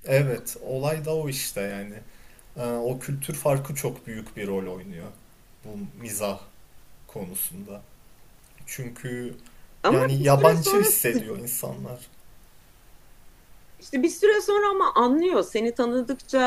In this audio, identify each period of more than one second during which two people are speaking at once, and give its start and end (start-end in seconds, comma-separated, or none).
9.9-11.2